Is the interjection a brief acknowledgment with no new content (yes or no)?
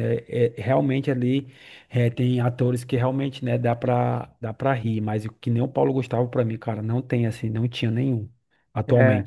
no